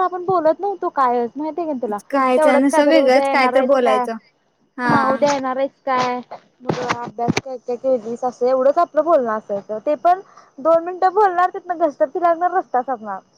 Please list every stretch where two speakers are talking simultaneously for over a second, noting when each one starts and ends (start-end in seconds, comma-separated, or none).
2.4-4.0